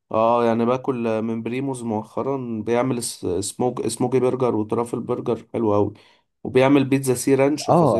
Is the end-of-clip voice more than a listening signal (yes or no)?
yes